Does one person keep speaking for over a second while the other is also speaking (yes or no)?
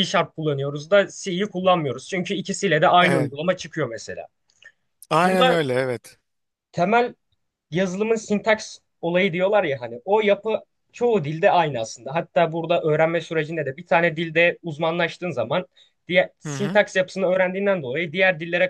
no